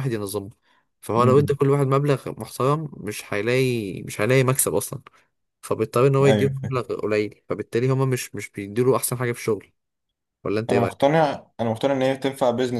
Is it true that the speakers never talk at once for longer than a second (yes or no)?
yes